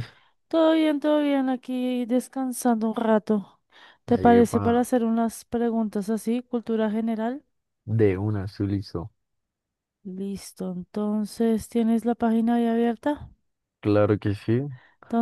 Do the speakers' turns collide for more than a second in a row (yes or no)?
no